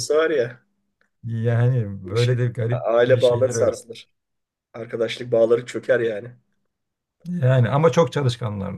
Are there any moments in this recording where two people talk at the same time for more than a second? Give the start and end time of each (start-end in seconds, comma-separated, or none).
2.0-3.7